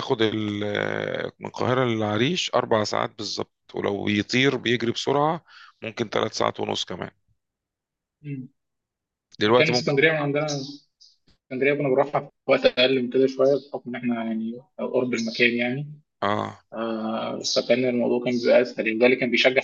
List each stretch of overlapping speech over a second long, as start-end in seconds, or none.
none